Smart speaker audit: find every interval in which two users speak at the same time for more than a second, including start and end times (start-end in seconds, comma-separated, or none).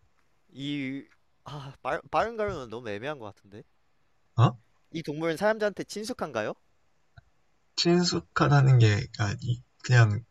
none